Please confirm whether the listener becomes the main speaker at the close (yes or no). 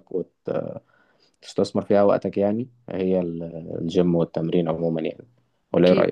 yes